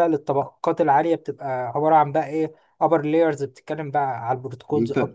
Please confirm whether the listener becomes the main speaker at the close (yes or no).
yes